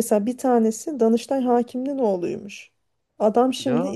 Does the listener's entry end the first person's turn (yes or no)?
no